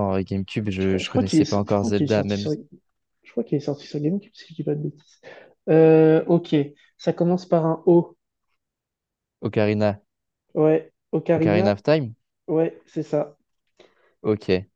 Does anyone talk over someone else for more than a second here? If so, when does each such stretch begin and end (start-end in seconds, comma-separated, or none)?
0.8-2.5